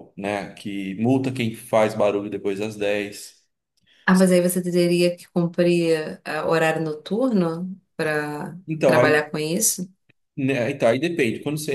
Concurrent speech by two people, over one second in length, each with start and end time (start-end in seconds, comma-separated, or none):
none